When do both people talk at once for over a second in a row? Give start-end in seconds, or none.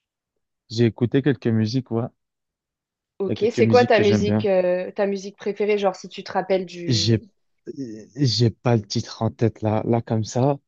3.3-4.5